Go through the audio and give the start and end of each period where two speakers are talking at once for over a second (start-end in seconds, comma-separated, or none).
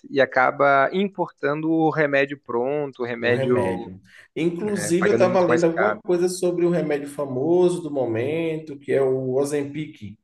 4.6-6.0